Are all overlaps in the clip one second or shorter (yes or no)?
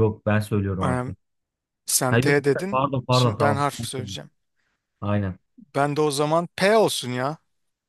no